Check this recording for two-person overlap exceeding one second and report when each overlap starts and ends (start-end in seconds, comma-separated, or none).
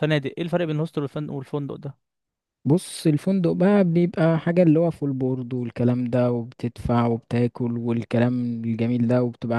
none